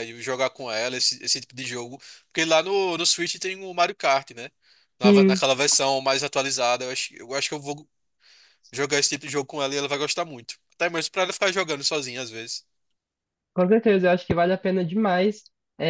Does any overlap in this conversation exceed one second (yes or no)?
no